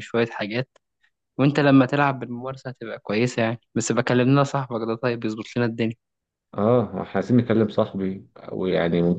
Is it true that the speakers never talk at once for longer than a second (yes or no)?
yes